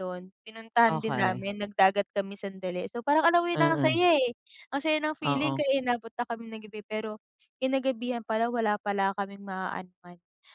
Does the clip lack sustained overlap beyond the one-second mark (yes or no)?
yes